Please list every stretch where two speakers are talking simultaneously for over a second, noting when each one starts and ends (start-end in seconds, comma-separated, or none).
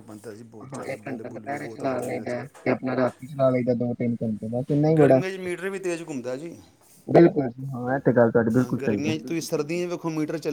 0.7-2.3